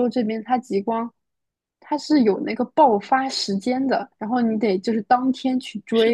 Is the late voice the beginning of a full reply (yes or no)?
yes